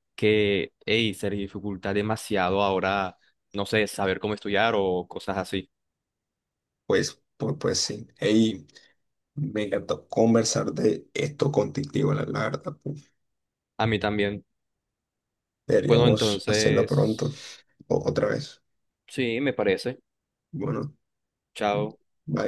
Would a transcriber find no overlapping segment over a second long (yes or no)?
no